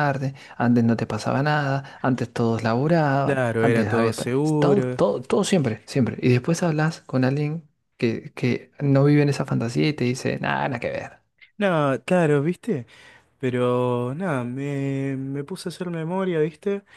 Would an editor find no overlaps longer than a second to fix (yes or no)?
no